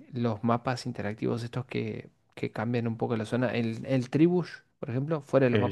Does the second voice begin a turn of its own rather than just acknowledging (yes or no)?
no